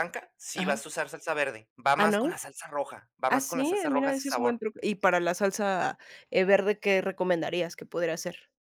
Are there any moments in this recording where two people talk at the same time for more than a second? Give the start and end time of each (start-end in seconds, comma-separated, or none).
3.3-4.6